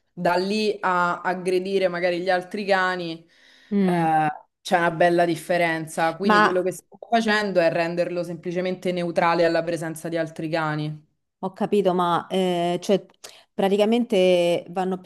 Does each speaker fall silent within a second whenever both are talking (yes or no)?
yes